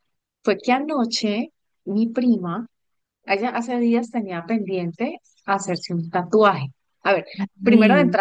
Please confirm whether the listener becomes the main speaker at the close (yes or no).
no